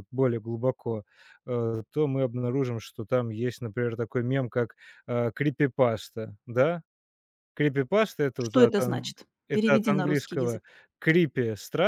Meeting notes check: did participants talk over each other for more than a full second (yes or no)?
yes